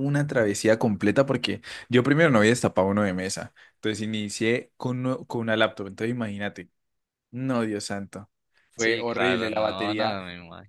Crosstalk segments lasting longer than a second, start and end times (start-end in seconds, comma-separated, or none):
8.8-10.2